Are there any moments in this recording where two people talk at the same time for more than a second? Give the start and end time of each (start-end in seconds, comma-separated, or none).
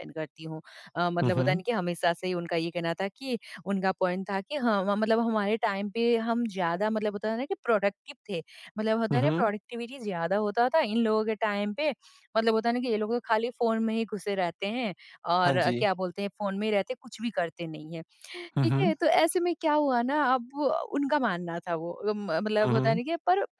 none